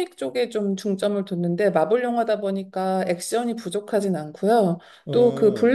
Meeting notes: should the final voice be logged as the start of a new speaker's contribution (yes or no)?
no